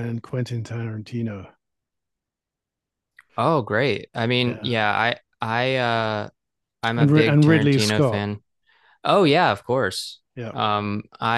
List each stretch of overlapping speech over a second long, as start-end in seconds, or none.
7.0-8.2